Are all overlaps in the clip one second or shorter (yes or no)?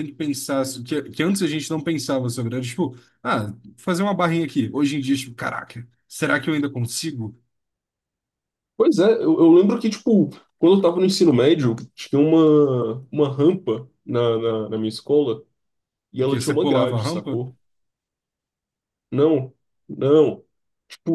no